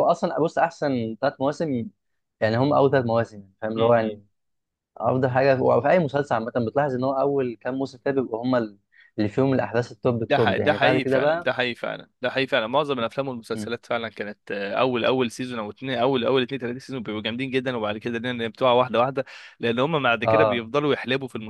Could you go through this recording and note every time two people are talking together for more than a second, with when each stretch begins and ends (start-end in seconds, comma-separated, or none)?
10.3-11.5